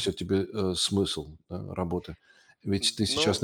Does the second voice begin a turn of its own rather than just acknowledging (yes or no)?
no